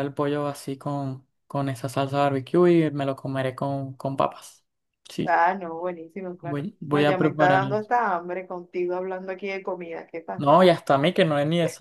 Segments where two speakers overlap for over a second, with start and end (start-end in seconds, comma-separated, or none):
6.4-7.9